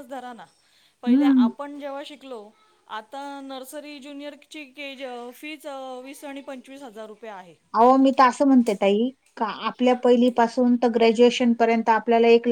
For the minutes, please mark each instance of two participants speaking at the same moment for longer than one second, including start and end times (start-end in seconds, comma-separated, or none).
none